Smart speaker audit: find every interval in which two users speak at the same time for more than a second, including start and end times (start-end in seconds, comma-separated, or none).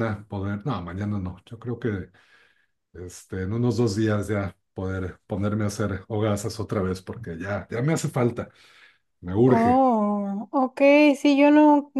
none